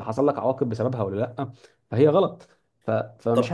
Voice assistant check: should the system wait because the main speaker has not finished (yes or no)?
yes